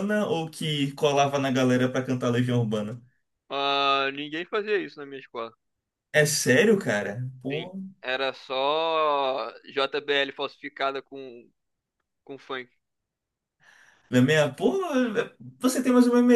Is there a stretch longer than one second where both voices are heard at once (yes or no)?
no